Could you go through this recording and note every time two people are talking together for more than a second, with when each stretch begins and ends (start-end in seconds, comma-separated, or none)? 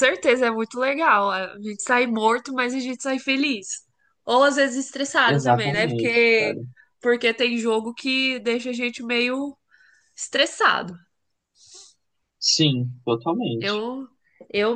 5.2-6.6